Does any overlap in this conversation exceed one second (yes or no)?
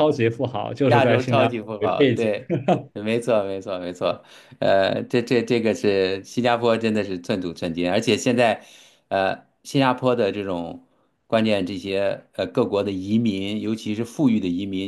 yes